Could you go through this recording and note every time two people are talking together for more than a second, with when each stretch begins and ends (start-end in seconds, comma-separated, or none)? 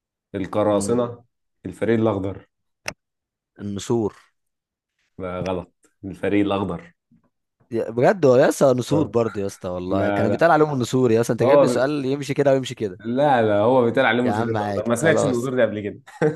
14.2-15.5